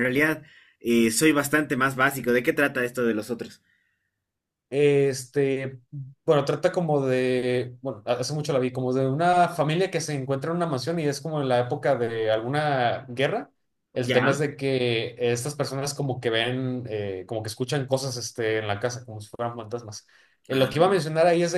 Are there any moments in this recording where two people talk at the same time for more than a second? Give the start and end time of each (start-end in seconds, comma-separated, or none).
none